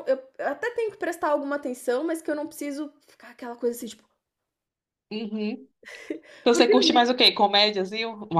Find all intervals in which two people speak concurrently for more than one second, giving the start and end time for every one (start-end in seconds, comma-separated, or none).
none